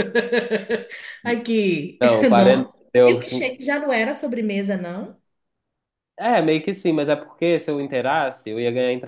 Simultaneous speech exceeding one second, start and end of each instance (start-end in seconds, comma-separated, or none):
2.4-3.6